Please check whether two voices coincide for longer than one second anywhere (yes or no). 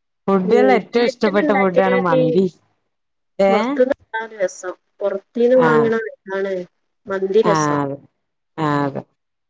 yes